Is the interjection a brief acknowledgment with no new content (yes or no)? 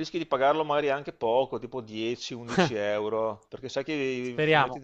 yes